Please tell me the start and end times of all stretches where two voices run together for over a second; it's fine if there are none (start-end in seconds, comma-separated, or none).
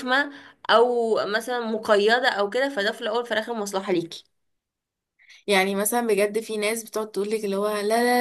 none